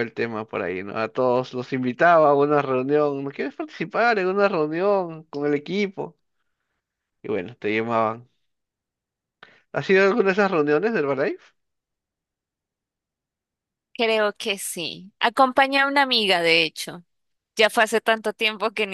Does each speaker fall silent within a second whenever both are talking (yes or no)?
yes